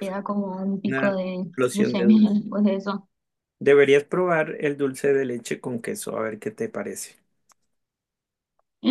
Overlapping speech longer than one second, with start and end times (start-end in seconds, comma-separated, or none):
0.9-2.4